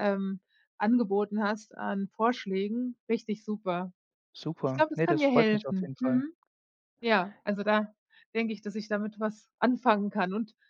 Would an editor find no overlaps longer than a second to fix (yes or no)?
no